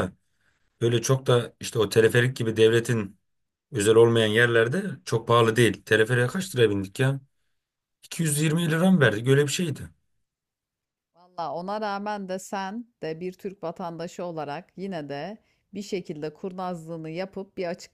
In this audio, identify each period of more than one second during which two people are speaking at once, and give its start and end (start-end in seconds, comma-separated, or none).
none